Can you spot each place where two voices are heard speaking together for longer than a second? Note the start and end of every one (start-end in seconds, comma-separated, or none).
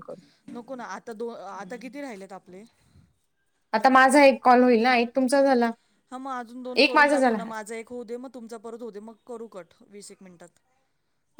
none